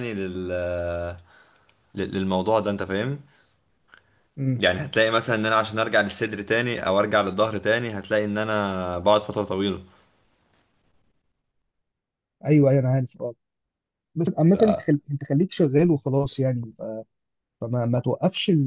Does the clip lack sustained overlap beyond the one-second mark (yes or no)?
yes